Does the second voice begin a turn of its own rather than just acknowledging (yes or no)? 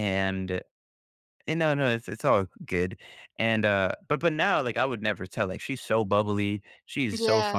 no